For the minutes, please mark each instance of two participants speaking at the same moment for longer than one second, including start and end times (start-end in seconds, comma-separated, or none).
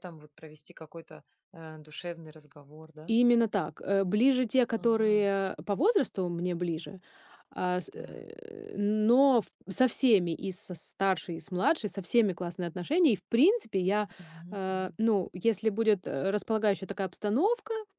none